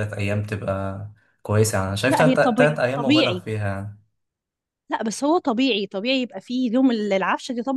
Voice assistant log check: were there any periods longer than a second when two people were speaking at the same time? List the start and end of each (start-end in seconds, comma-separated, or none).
2.1-3.4